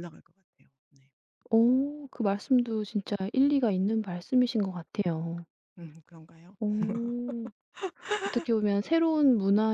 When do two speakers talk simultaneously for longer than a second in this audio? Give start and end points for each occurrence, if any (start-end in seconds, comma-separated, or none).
none